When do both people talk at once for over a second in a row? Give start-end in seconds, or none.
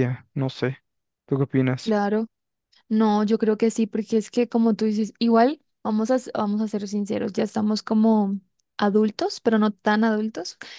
none